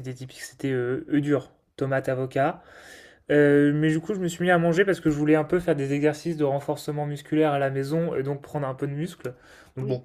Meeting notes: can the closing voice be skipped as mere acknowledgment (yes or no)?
yes